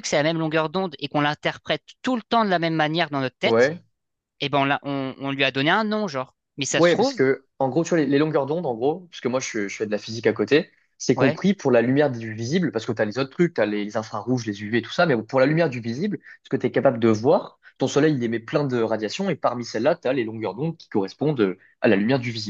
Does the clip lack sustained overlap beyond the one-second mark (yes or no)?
yes